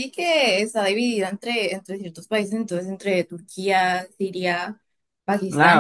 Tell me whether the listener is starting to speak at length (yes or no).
yes